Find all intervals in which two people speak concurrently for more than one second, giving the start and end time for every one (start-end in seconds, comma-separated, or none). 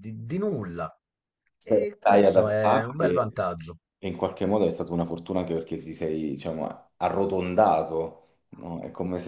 1.6-3.1